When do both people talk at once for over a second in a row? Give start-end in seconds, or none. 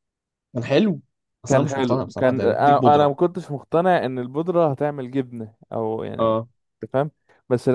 1.5-3.1